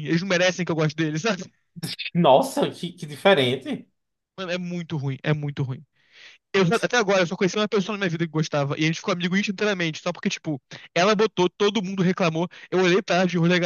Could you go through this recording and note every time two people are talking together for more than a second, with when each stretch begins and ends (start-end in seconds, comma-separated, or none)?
none